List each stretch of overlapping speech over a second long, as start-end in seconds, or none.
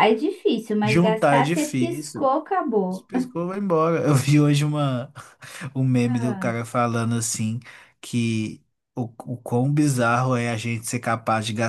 0.8-2.3